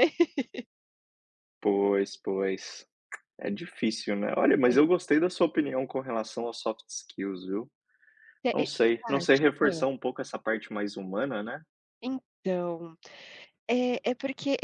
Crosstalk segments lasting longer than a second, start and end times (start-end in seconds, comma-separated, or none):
8.5-9.8